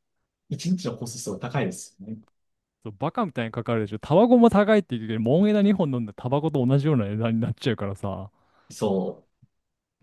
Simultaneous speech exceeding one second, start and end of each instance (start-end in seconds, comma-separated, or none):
none